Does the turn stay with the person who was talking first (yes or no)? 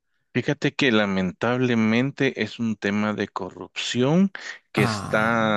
yes